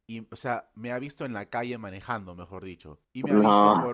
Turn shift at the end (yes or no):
no